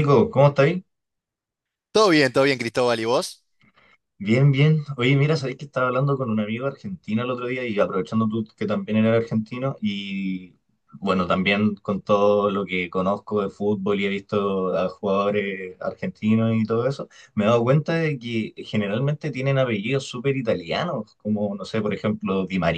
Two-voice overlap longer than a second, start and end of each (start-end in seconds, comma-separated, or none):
none